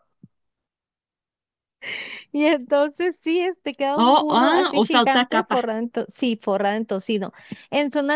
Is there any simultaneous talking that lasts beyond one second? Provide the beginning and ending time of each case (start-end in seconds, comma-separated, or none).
4.0-5.6